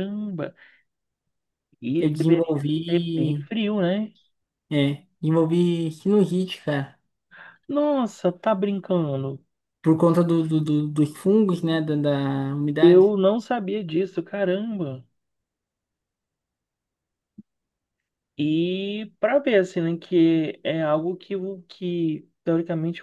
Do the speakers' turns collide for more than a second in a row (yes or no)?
yes